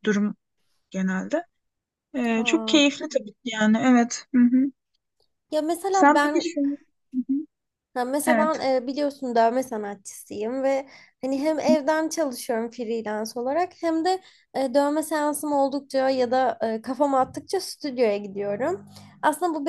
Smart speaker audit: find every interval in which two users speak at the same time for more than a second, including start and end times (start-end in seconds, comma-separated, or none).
none